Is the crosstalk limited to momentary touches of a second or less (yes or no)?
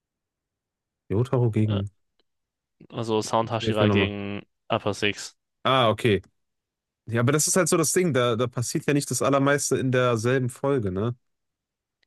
yes